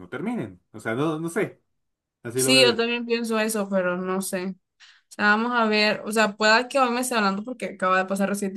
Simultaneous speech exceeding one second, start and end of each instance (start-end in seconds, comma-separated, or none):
none